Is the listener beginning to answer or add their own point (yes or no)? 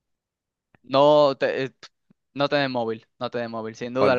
no